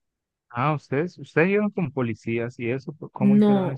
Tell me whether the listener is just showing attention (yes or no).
no